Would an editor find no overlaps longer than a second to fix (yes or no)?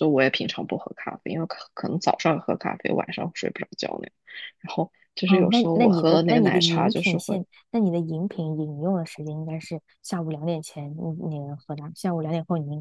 no